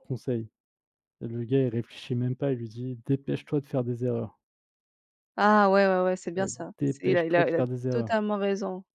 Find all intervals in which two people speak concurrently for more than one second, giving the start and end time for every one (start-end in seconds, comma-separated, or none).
6.4-8.1